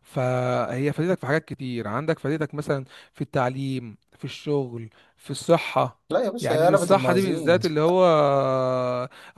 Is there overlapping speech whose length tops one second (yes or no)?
yes